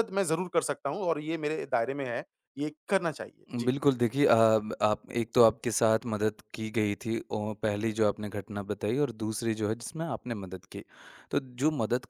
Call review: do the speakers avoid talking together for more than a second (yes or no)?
yes